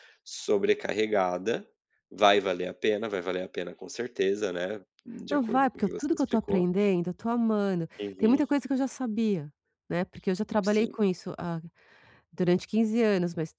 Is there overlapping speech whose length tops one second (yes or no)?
yes